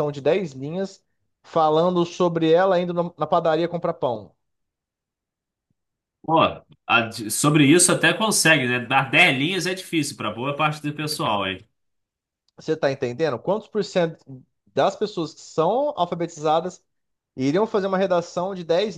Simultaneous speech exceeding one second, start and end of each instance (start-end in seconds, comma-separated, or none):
none